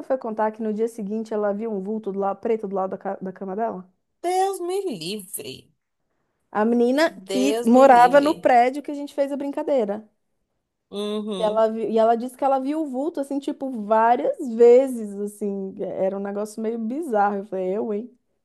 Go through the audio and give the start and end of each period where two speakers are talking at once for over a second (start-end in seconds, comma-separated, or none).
7.1-8.4